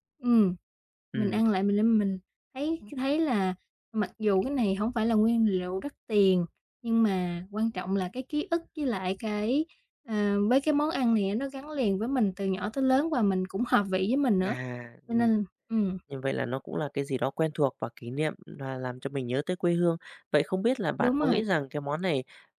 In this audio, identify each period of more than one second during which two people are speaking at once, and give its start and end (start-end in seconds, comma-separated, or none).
none